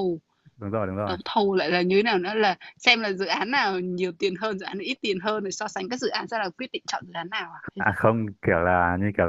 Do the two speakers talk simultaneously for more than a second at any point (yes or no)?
no